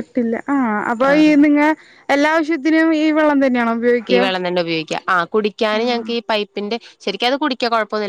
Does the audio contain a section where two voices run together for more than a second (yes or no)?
no